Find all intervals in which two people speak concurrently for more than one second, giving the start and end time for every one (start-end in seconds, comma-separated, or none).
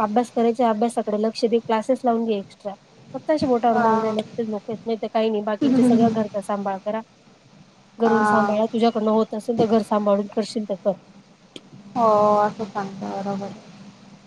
none